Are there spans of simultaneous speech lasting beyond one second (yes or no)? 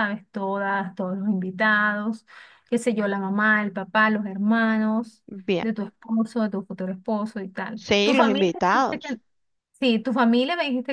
yes